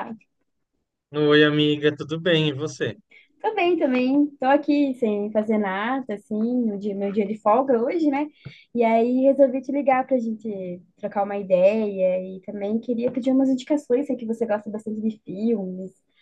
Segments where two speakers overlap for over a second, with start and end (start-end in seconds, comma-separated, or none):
none